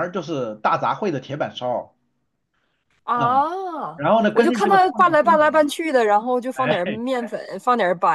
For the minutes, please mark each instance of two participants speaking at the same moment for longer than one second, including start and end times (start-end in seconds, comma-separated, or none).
4.3-5.7